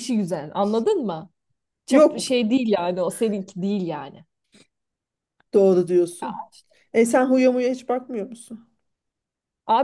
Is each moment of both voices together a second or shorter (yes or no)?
yes